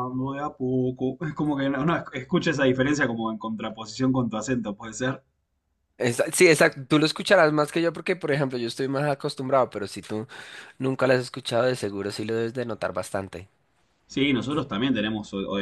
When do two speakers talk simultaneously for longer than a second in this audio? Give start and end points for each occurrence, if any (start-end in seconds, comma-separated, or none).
none